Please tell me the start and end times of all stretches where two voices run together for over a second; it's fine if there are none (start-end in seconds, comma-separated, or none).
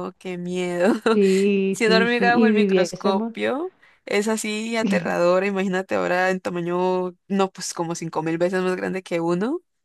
1.7-3.3